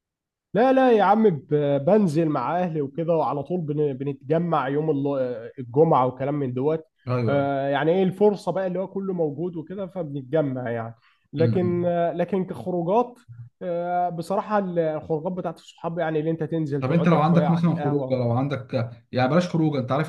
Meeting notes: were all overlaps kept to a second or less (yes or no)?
no